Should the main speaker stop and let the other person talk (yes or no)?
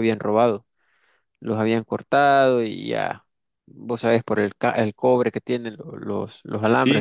yes